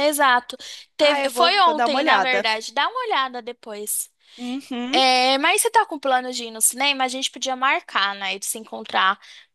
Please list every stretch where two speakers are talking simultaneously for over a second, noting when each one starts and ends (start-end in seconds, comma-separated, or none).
1.0-2.5